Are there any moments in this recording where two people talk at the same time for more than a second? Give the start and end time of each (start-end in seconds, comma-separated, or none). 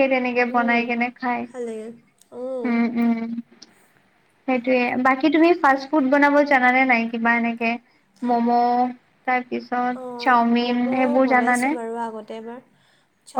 10.0-11.7